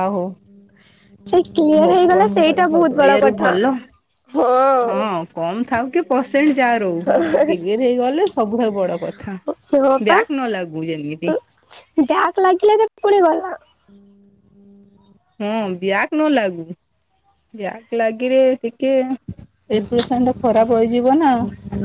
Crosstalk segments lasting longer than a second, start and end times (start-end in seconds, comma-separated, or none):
1.8-3.5